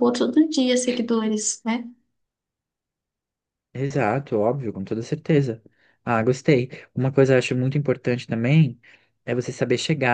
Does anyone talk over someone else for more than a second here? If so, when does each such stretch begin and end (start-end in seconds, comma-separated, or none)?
none